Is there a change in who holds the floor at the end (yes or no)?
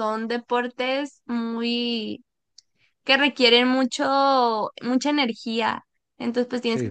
no